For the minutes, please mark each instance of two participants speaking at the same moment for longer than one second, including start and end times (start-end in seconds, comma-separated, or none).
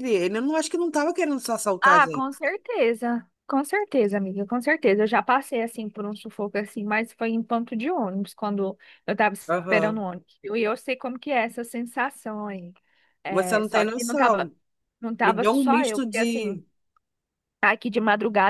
13.3-14.5, 15.2-16.6